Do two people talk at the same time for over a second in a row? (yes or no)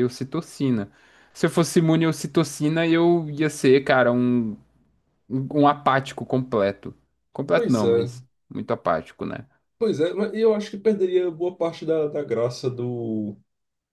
no